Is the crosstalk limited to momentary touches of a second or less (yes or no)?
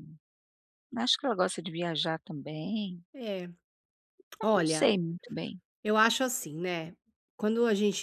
yes